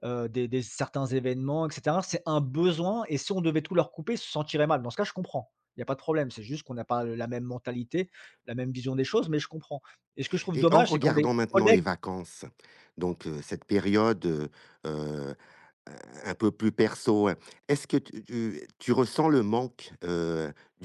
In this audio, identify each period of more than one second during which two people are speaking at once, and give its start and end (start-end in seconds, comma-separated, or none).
10.5-11.8